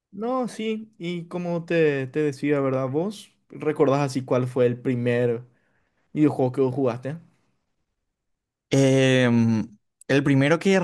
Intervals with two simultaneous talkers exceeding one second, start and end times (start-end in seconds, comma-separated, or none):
none